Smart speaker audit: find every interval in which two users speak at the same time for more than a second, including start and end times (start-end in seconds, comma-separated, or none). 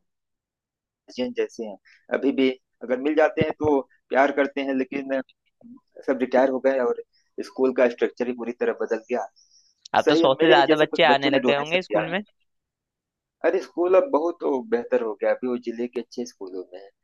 10.0-12.1